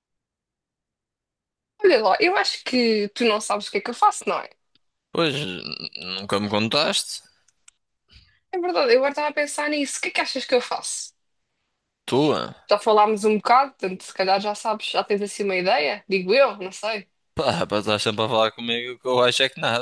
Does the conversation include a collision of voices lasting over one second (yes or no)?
no